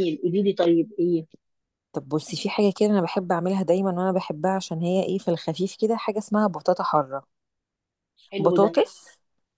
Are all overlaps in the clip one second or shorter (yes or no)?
yes